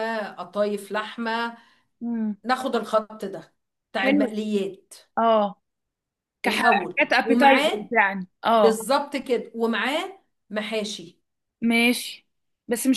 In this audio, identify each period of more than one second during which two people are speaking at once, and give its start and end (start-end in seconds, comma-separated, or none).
6.5-7.9